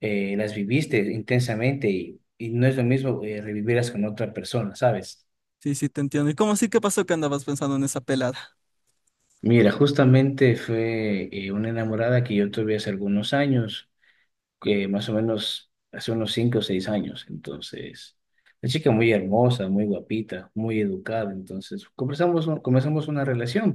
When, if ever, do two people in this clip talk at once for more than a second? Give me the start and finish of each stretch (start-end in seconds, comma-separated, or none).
none